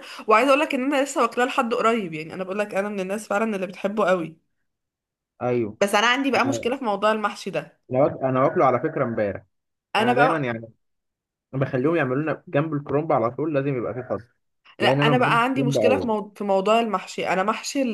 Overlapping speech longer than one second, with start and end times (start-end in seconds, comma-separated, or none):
14.8-16.1